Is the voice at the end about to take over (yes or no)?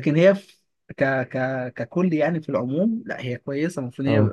no